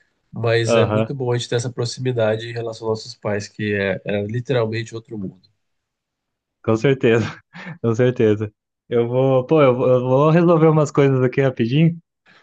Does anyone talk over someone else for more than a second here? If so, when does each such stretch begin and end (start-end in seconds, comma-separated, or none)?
none